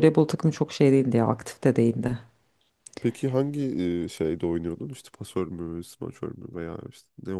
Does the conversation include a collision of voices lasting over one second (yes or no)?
no